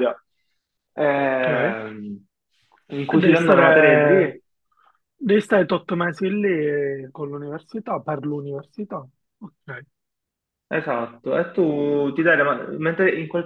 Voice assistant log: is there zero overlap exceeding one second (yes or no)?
no